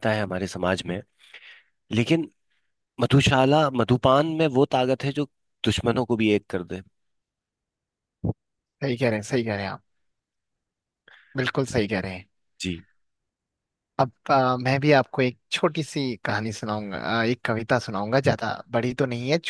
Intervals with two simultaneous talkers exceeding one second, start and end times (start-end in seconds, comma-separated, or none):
none